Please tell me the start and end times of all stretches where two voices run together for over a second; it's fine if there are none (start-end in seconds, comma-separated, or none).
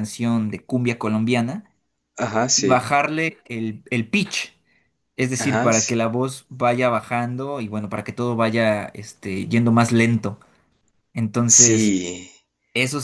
none